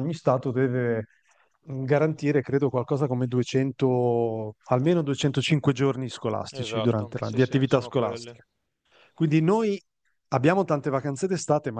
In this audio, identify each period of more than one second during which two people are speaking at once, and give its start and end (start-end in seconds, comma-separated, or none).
6.5-8.4